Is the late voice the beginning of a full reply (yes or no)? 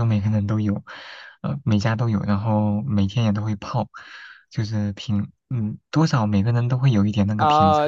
yes